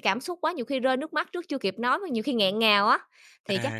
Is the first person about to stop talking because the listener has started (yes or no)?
no